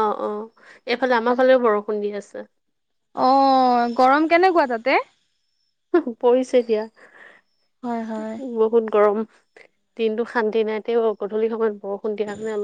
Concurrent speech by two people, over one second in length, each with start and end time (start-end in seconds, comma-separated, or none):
none